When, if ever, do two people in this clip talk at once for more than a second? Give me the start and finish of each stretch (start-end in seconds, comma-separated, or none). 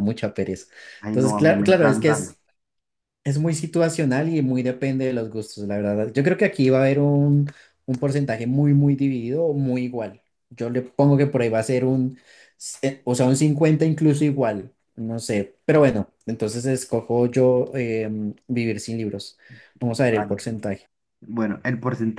1.1-2.3